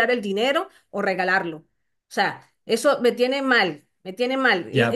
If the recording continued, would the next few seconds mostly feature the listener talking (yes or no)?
yes